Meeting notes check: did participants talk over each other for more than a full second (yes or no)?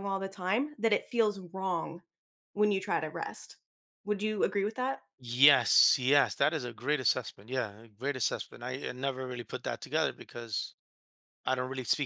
no